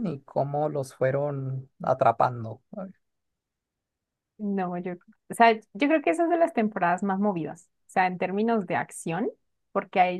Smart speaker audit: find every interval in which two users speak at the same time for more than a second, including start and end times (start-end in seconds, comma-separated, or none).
none